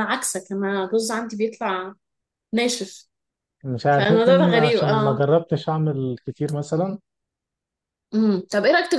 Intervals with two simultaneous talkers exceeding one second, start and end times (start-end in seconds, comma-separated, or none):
3.9-5.2